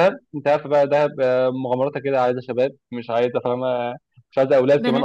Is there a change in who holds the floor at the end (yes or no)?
no